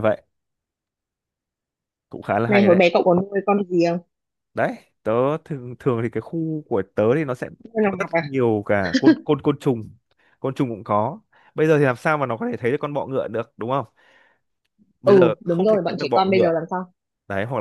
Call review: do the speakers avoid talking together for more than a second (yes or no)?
no